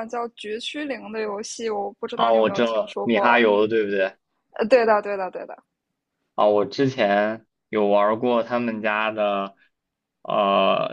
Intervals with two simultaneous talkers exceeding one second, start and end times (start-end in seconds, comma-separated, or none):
2.1-3.4